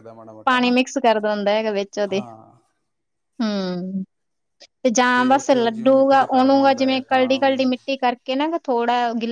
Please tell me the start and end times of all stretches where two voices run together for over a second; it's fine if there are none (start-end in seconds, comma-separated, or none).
5.3-7.7